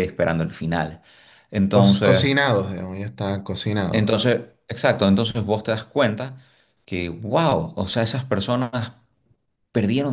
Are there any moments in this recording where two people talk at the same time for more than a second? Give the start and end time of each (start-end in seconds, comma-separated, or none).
none